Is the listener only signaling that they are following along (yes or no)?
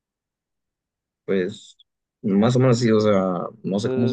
no